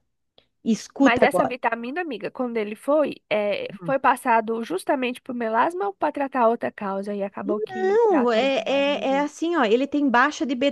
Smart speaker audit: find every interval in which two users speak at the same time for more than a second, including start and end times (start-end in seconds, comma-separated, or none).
7.7-9.3